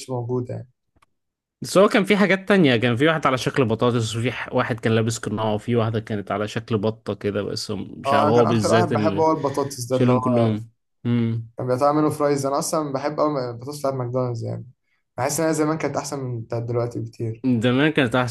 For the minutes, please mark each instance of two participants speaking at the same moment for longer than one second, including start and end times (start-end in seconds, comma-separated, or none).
8.1-9.3